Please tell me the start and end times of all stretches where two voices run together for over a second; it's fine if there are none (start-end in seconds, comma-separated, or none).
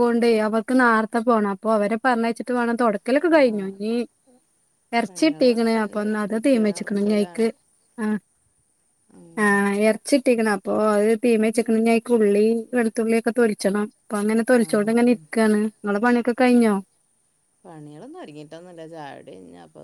5.0-6.7